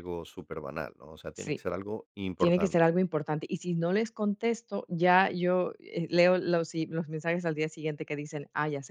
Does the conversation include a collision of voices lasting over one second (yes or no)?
no